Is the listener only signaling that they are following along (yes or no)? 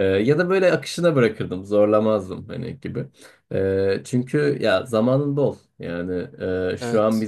yes